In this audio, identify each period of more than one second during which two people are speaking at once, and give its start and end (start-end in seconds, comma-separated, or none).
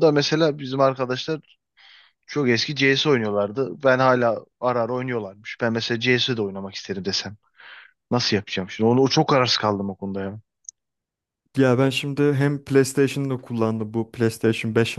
none